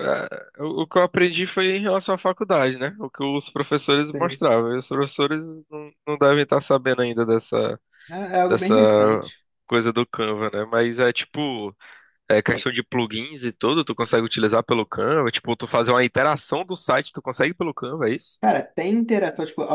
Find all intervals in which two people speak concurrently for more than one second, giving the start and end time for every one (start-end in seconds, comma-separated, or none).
none